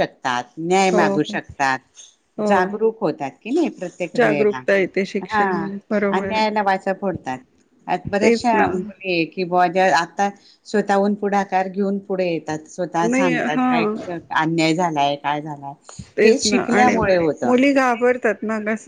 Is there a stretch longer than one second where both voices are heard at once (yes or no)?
no